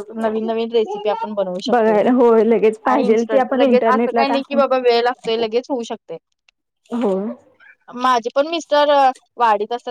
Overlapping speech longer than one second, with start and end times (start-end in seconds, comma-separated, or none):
2.9-4.6